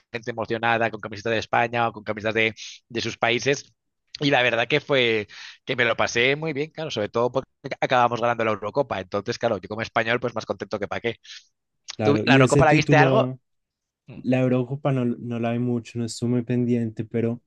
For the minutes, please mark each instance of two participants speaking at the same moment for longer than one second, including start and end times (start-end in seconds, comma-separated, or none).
12.0-13.3